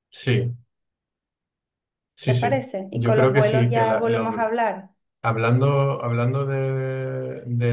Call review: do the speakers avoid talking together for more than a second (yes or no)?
no